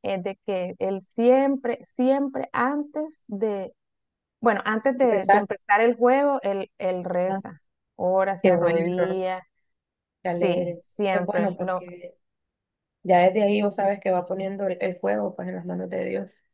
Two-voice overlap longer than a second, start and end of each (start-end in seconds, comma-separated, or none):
10.3-11.8